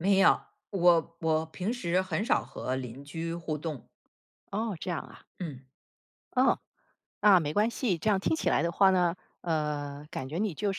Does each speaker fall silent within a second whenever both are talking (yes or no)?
yes